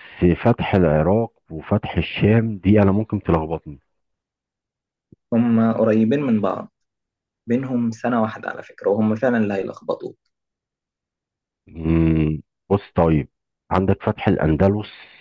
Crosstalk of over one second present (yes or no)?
no